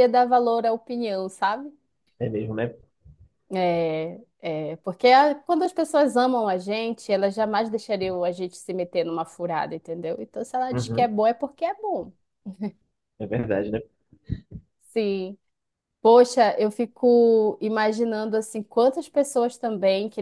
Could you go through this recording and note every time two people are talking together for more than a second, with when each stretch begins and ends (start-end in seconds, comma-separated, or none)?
none